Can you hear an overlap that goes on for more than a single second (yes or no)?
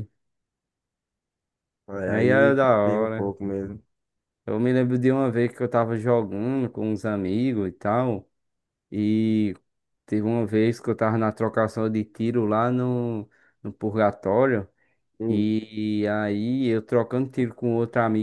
yes